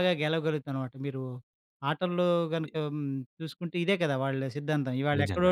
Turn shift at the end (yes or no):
no